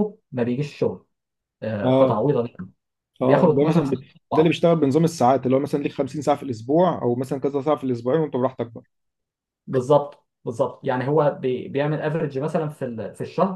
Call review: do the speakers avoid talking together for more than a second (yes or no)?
no